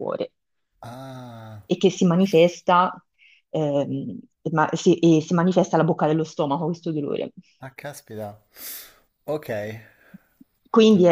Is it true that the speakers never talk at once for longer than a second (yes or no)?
yes